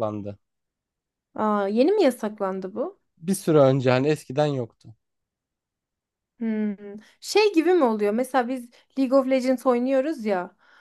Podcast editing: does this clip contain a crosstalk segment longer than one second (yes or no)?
no